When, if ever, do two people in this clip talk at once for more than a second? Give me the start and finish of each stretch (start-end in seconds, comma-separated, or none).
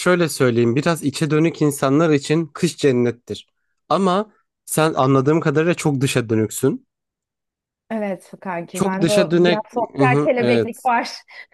8.7-10.9